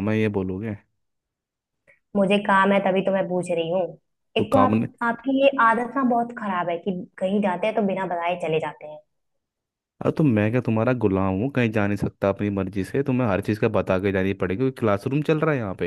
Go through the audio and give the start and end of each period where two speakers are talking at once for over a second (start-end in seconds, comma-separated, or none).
none